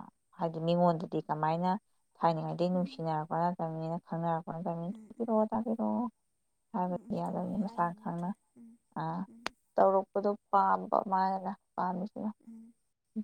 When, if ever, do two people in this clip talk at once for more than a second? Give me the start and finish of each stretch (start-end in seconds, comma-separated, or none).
6.9-8.3